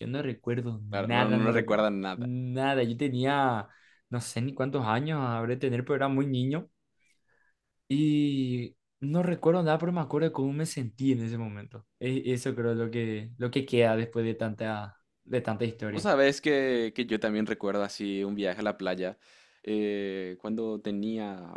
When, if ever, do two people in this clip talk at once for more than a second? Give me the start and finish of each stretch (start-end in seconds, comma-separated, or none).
0.9-2.3